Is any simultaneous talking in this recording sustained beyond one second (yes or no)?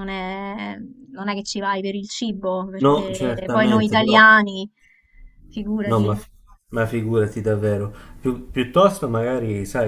yes